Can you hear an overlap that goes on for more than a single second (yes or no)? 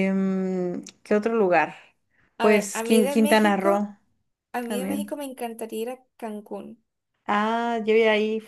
yes